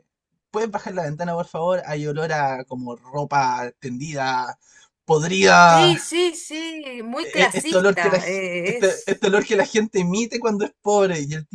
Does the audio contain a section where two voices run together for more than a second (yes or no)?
yes